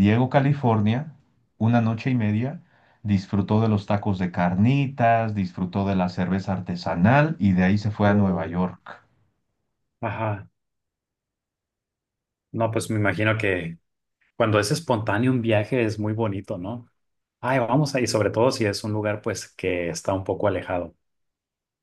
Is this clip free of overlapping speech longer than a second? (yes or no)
yes